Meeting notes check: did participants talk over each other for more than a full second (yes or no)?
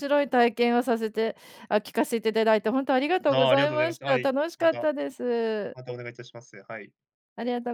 yes